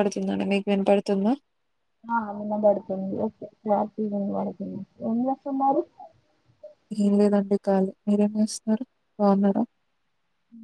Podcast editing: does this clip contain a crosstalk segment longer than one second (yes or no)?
no